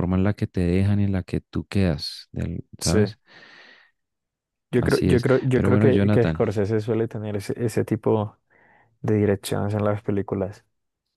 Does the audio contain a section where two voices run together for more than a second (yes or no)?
yes